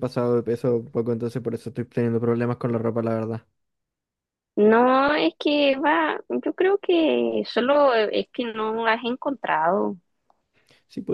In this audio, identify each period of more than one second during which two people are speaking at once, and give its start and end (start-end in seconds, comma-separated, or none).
none